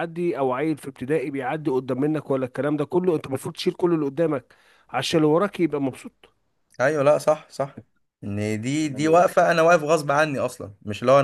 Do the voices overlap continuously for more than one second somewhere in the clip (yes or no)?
no